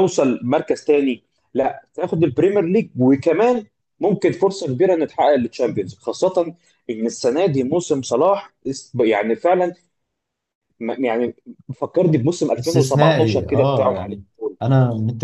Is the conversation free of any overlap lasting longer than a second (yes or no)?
no